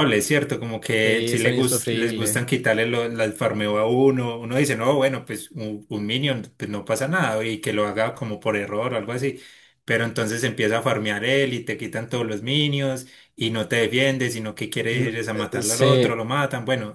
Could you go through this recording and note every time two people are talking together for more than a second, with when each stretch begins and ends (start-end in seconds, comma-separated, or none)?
1.0-2.4, 14.9-16.2